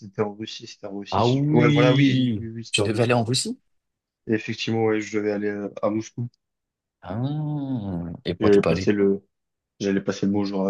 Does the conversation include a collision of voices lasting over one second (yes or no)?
yes